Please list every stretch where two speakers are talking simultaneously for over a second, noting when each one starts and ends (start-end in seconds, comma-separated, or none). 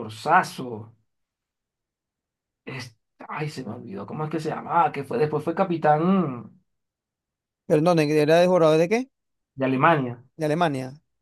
none